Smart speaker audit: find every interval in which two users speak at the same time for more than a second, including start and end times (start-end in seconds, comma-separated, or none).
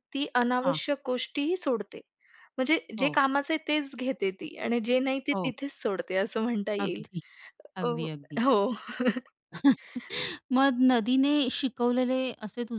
none